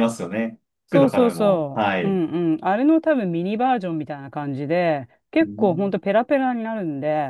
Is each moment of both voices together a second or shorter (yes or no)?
no